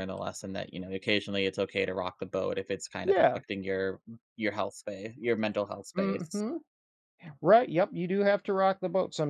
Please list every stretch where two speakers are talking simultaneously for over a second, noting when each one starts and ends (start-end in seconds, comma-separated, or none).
none